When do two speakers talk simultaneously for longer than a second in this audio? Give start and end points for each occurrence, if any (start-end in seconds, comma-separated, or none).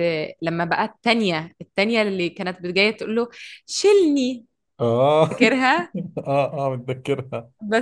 none